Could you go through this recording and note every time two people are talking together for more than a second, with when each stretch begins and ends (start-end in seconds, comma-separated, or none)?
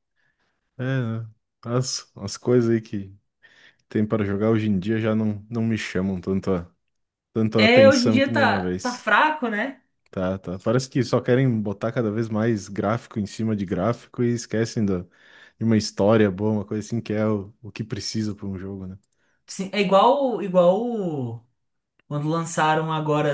7.6-9.1